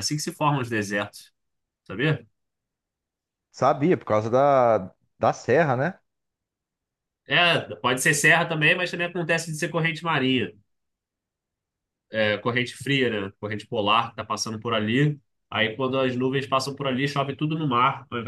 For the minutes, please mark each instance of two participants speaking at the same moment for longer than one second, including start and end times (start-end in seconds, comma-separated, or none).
none